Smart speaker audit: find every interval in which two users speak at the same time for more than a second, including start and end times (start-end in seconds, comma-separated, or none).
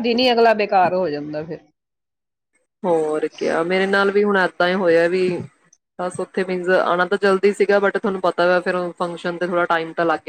none